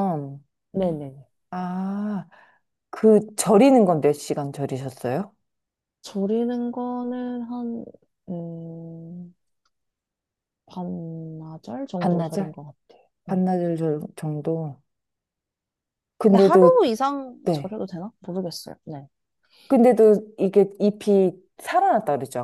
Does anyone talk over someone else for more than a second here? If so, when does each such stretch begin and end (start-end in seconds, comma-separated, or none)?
none